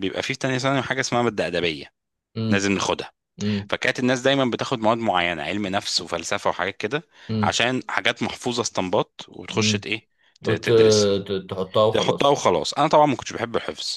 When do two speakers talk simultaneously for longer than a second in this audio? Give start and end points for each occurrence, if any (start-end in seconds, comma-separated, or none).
none